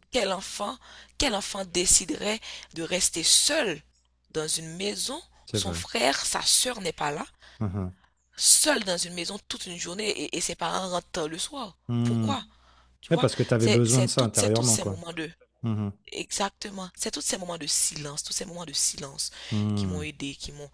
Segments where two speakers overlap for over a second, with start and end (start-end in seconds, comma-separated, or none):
13.1-15.0